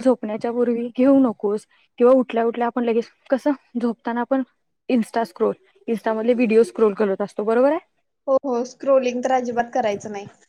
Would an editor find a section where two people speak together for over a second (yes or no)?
no